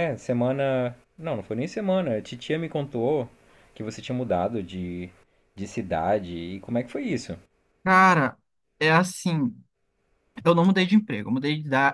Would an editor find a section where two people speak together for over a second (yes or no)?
no